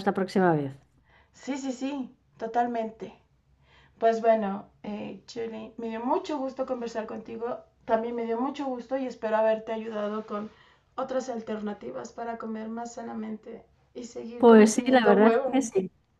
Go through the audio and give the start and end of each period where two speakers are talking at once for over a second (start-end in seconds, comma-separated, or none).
14.4-15.6